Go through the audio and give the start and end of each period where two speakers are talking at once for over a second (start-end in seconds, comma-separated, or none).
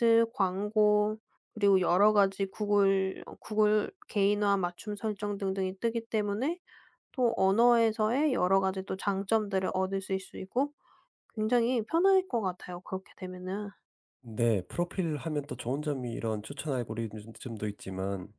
none